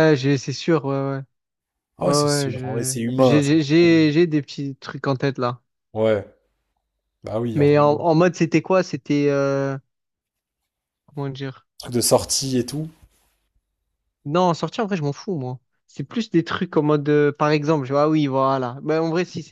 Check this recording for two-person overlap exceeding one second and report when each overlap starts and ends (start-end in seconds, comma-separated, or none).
2.0-3.5